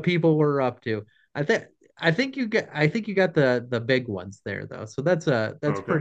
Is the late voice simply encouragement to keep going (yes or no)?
no